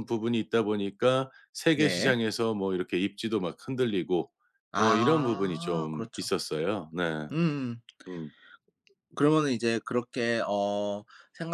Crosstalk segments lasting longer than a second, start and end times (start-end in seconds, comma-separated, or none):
4.8-6.3